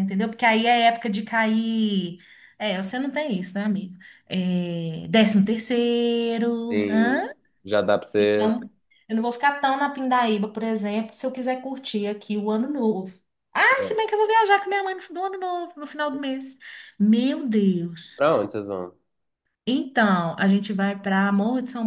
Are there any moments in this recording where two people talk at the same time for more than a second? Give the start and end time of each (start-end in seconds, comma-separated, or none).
none